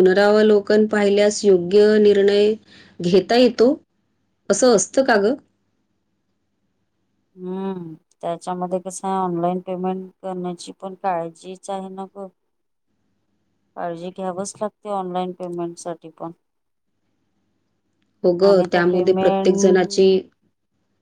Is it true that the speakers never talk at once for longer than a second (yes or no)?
no